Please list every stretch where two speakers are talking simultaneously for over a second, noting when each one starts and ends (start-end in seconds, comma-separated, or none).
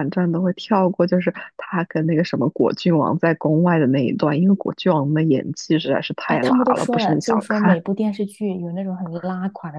6.3-7.8